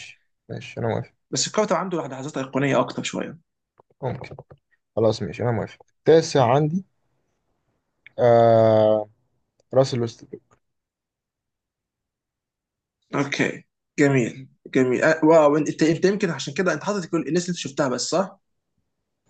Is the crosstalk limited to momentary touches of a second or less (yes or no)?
yes